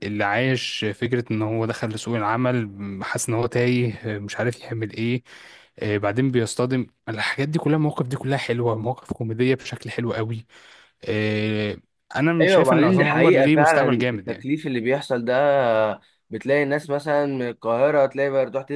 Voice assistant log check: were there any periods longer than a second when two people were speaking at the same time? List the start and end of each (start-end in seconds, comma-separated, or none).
12.4-14.4